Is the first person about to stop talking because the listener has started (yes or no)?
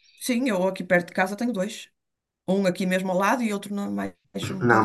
yes